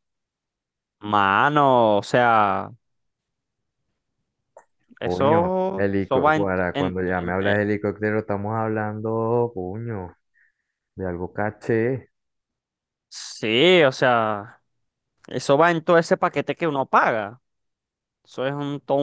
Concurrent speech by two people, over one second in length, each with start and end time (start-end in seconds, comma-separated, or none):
5.0-7.6